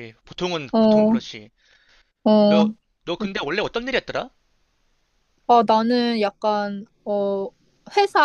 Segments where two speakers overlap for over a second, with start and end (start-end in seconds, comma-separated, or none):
none